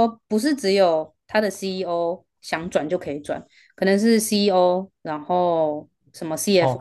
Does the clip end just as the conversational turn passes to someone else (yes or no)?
yes